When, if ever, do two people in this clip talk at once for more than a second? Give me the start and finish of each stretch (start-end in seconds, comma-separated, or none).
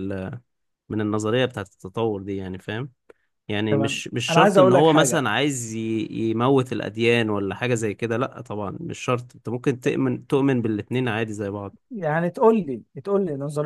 3.7-5.3